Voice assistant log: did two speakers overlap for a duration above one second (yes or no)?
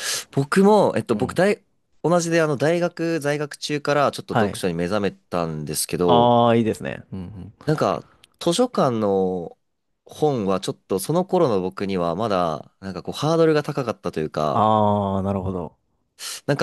no